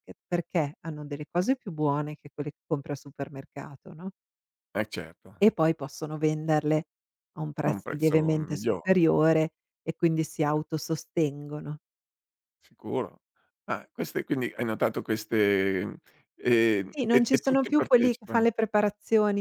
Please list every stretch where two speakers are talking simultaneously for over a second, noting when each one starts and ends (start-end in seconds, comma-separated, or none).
7.6-8.9, 16.9-18.5